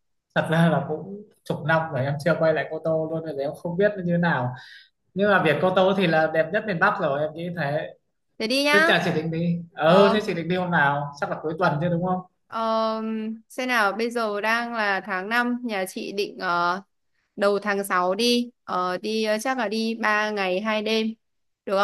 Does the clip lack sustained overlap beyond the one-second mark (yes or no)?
yes